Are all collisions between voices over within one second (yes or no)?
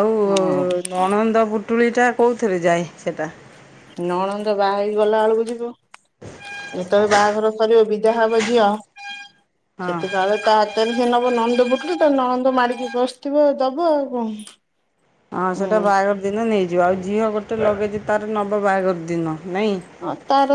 yes